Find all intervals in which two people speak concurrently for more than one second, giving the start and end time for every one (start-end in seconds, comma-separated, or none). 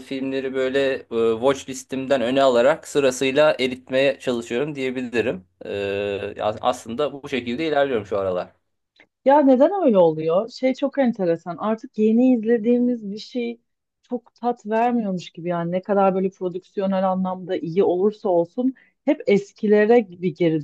none